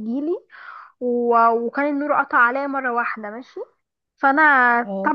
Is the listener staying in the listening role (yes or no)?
yes